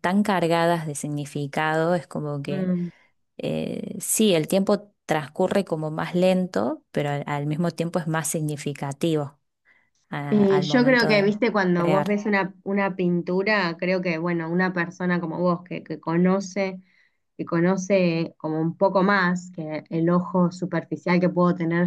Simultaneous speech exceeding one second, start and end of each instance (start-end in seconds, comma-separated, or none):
10.3-12.2